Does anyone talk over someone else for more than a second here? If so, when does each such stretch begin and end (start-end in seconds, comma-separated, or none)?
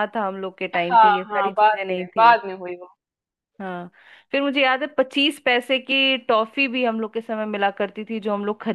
0.8-2.4